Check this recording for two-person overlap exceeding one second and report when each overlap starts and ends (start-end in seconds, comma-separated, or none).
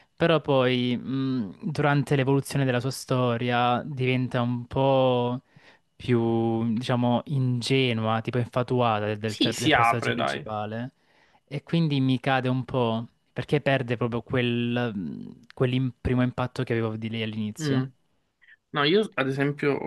9.2-10.4